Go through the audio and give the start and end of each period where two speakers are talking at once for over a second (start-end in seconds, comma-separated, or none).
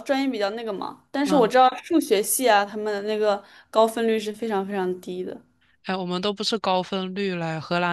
none